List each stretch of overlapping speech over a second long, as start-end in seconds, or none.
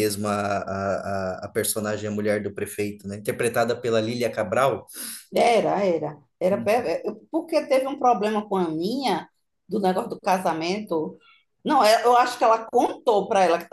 none